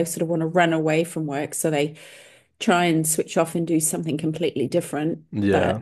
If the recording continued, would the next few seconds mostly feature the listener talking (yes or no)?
no